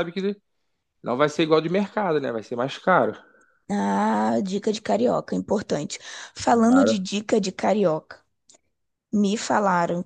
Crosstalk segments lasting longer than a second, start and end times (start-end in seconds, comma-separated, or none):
none